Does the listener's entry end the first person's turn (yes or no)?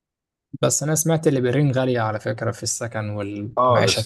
yes